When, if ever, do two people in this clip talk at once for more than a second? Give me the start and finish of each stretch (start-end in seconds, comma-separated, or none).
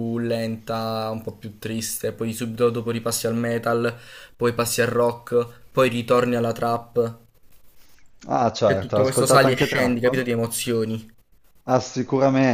8.6-10.2